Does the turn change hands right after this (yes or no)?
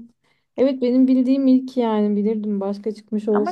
yes